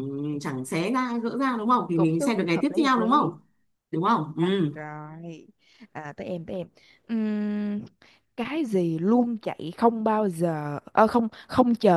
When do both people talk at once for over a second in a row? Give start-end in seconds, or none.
1.9-3.4